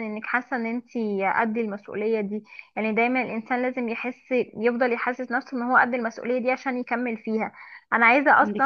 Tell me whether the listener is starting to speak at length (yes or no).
no